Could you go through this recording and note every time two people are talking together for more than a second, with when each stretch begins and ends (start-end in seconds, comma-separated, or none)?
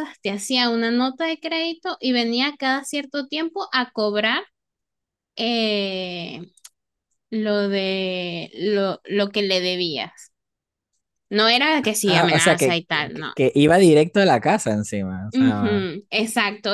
12.1-13.3